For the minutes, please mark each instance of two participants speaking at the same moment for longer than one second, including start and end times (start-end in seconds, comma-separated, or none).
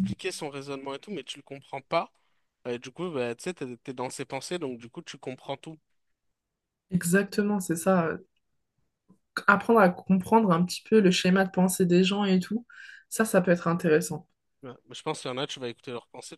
none